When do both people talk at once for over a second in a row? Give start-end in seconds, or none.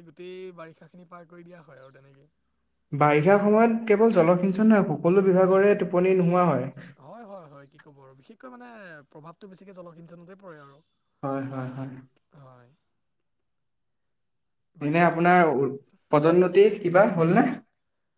none